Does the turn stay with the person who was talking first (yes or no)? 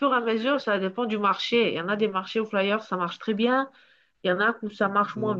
yes